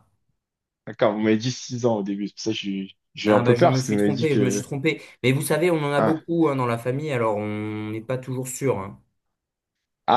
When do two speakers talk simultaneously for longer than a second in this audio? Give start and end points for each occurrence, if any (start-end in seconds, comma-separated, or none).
3.2-4.7